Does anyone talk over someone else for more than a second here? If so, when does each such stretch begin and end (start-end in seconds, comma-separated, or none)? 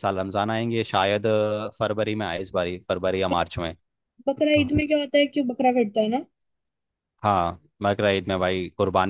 none